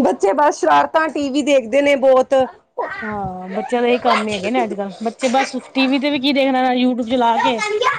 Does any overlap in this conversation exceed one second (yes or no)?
no